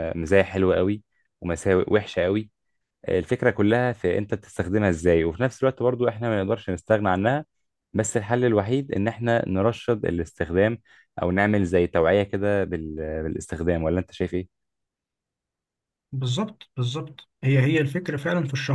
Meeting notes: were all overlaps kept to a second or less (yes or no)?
yes